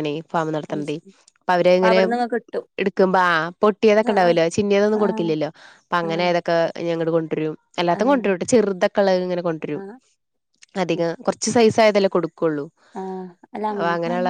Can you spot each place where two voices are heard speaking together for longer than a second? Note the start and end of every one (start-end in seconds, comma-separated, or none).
none